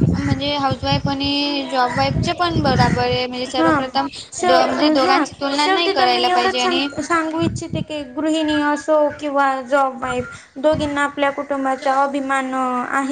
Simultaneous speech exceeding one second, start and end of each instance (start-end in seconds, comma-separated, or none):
4.5-6.9